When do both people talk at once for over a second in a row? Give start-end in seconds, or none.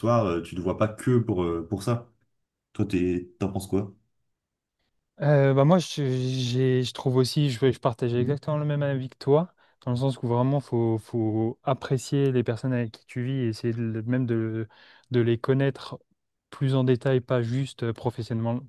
none